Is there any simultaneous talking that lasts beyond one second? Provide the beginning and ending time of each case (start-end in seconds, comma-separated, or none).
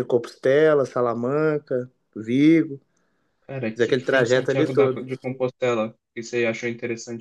3.7-5.0